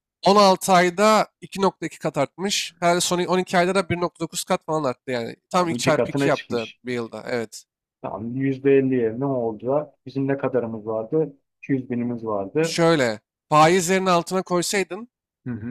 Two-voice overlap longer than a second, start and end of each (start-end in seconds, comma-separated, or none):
5.5-6.8